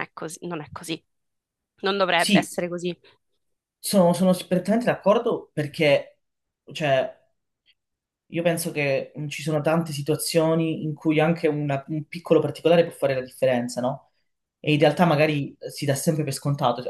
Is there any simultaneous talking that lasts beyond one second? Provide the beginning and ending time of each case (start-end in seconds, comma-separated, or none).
none